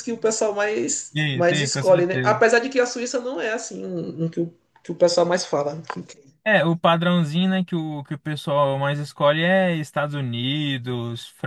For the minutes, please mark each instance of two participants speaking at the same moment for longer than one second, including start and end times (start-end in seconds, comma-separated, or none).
1.1-2.4